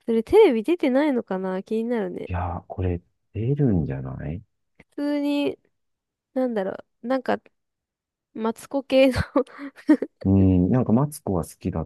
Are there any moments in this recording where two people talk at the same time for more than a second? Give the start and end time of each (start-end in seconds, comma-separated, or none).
none